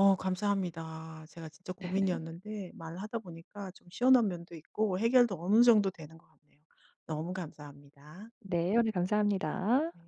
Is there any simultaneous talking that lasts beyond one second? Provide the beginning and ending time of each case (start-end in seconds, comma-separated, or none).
none